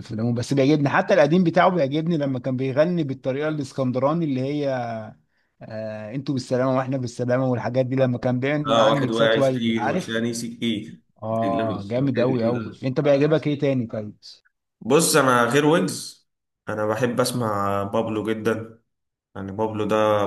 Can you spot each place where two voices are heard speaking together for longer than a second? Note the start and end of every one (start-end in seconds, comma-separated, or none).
8.7-10.2